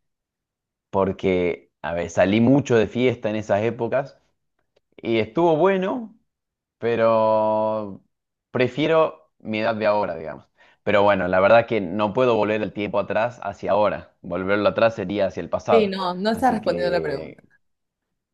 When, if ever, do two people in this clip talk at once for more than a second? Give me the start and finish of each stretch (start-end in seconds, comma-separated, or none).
15.7-17.4